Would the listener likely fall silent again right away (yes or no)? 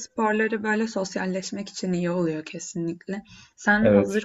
yes